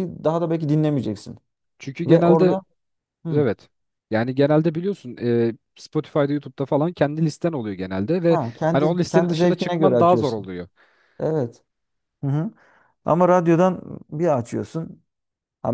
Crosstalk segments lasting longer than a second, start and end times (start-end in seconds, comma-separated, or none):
8.3-10.5